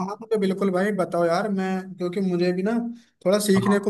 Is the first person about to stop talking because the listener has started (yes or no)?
no